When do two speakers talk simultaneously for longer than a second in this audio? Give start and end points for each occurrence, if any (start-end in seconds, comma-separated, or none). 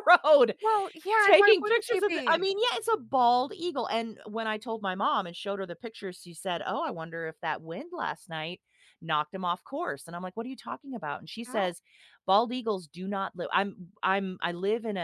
1.2-2.5